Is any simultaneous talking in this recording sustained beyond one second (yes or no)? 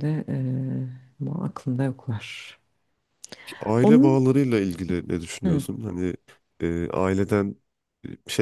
no